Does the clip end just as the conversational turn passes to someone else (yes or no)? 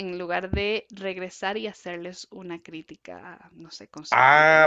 yes